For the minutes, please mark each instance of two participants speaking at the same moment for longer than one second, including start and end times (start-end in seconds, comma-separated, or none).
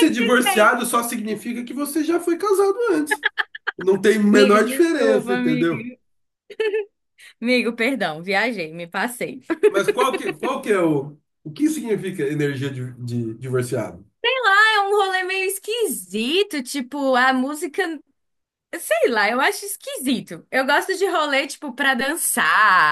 4.3-5.9